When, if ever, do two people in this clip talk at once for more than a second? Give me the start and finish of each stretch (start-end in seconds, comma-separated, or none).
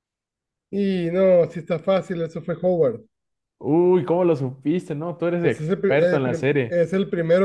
5.4-6.8